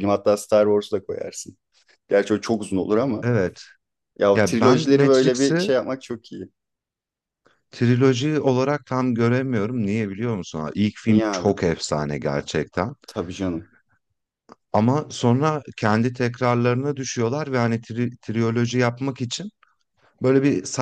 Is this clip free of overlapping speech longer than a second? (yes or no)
no